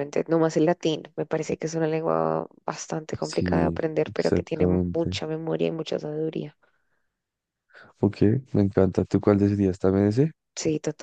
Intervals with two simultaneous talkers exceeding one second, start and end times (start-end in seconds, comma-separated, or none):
3.2-5.2